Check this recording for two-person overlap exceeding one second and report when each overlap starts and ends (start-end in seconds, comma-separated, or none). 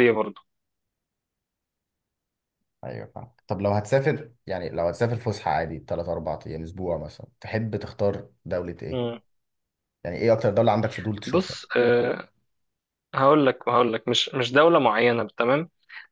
none